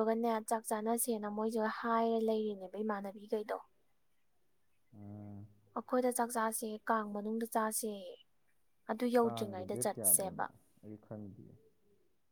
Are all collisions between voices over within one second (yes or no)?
no